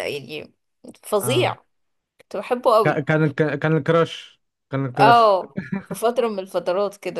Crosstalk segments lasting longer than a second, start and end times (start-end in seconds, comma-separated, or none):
none